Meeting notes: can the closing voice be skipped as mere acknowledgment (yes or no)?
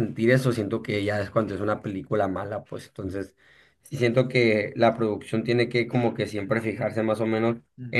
yes